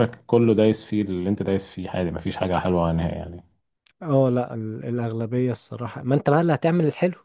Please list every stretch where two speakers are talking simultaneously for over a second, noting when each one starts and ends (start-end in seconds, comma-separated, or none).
none